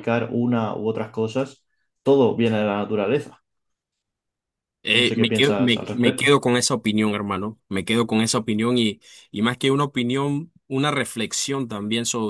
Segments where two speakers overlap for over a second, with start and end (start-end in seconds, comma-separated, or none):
5.0-6.3